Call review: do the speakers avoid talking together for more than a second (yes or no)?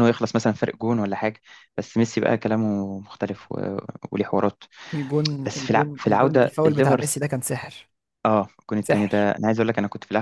no